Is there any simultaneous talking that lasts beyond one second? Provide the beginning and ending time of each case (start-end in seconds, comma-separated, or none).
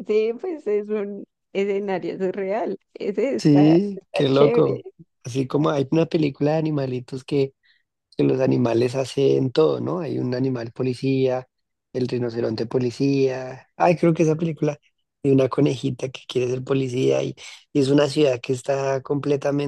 3.4-4.8